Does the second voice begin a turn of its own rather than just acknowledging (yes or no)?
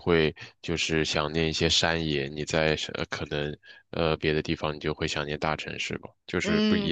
yes